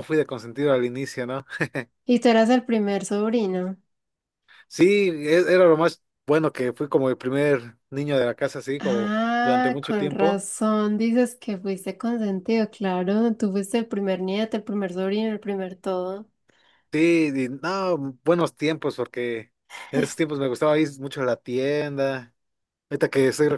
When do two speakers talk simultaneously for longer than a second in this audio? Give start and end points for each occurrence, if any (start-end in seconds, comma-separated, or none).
8.8-10.4